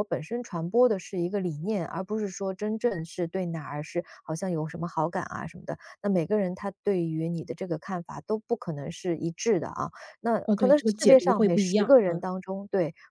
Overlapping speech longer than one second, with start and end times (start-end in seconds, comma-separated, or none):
10.4-12.3